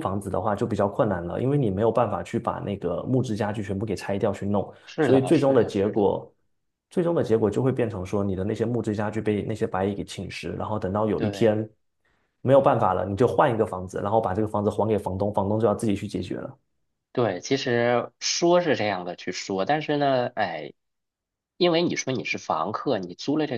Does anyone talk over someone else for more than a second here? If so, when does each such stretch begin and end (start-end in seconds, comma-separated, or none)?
4.8-6.1